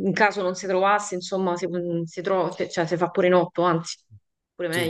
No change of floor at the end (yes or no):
no